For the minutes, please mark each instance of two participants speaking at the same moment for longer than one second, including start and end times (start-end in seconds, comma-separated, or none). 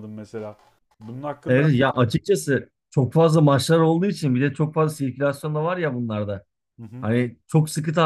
none